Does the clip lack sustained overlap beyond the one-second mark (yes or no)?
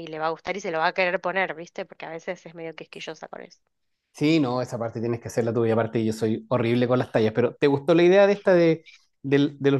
yes